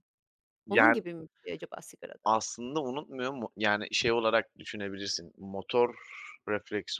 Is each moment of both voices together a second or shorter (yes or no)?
yes